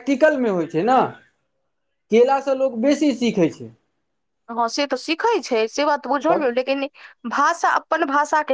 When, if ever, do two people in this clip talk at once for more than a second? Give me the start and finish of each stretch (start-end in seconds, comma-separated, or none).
none